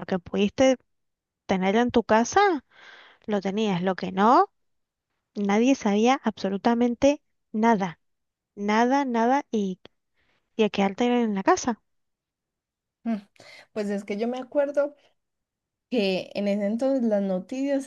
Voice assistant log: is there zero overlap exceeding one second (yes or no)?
yes